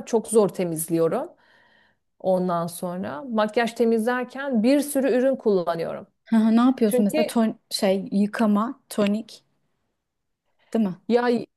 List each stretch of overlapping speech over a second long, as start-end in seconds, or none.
none